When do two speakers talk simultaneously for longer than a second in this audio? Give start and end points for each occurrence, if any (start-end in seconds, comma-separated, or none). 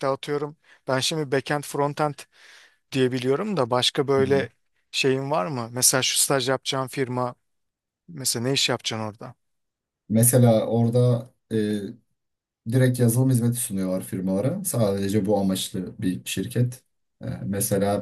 none